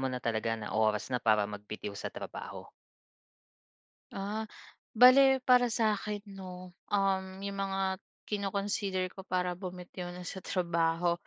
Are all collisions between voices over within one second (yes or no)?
yes